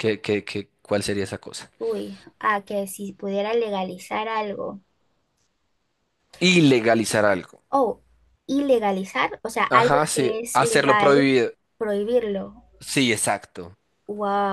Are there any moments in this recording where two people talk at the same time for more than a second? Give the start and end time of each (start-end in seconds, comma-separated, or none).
9.7-11.3